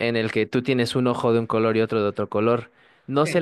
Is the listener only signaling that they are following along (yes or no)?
yes